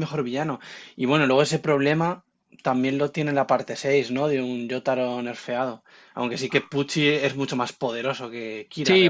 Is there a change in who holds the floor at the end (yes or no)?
yes